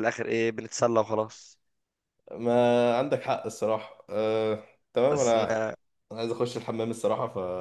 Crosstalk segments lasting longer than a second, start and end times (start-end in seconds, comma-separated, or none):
none